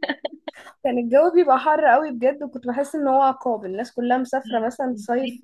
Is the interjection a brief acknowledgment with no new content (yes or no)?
yes